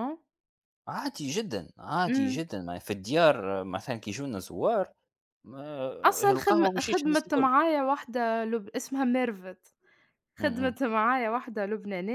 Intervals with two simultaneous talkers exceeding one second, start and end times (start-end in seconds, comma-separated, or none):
6.0-7.5